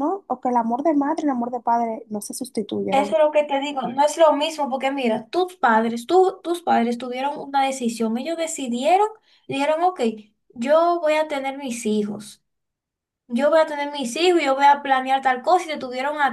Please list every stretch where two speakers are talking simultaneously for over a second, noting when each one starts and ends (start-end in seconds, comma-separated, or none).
none